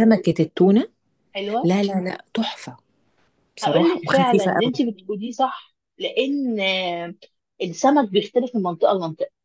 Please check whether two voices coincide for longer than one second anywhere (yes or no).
yes